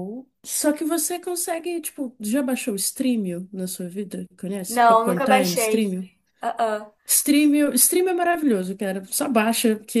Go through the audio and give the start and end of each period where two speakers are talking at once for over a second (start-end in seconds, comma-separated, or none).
4.7-5.9